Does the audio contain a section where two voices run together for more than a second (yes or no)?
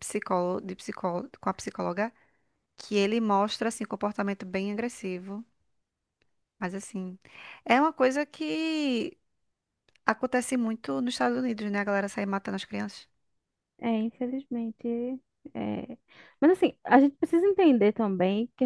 no